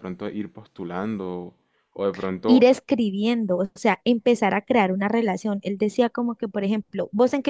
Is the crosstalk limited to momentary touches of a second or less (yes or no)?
yes